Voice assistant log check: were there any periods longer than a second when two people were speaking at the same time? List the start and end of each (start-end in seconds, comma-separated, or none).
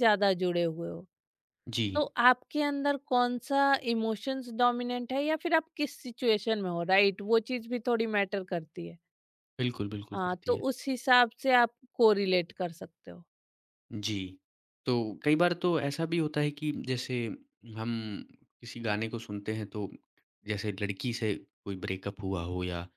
none